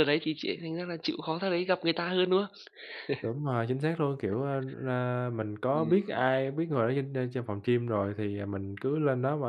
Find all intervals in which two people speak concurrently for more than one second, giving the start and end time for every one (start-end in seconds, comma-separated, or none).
none